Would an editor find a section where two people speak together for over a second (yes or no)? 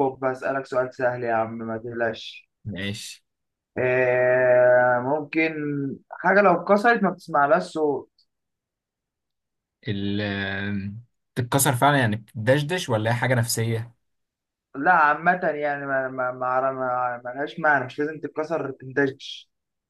no